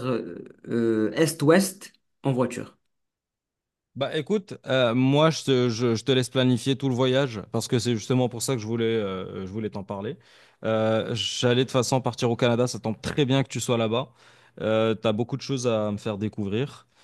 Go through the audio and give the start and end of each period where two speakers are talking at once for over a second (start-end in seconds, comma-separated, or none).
none